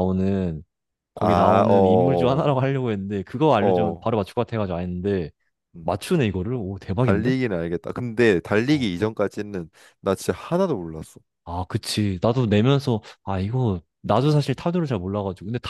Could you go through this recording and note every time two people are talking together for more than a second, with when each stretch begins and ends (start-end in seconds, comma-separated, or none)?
1.2-2.5